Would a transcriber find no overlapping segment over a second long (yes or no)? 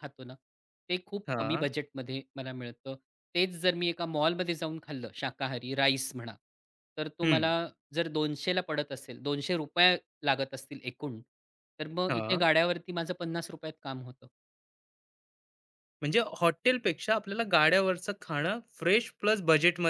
yes